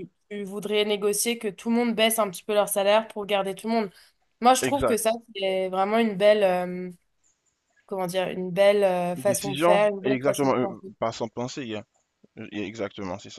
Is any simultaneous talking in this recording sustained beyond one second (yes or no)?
yes